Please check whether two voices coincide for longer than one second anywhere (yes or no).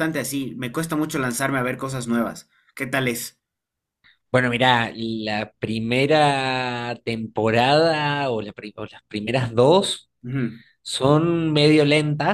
no